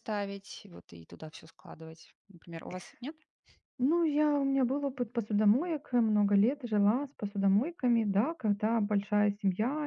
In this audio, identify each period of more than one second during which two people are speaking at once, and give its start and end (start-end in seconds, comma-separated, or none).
none